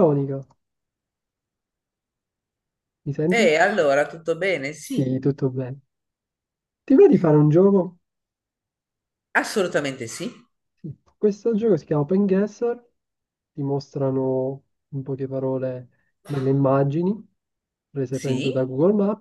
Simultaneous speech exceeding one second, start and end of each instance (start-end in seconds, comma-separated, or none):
none